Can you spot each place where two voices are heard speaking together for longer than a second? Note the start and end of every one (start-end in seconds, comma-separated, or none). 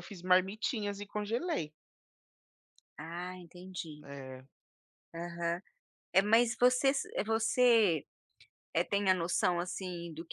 none